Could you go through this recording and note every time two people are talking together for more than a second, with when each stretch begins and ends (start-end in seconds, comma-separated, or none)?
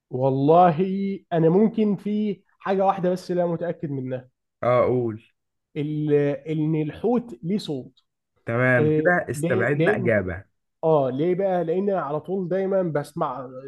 8.8-10.1